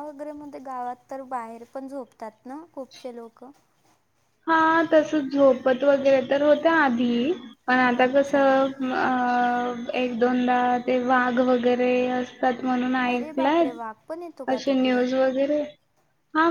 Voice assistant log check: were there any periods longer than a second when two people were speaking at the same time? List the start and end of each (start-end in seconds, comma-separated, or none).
none